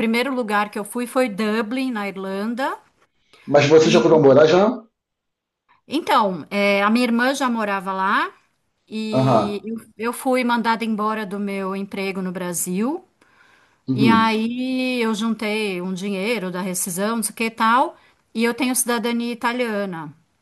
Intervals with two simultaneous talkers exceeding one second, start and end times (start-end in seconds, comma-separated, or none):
none